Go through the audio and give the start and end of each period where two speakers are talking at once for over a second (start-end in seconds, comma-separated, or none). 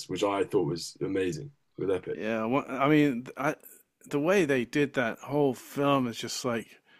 none